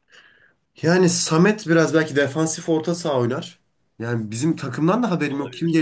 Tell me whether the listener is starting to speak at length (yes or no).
no